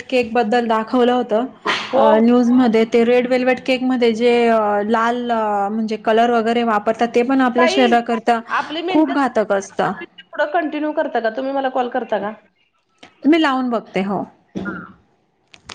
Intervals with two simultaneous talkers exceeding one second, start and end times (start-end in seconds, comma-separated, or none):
none